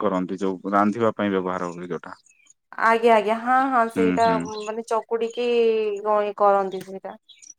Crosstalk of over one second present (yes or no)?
no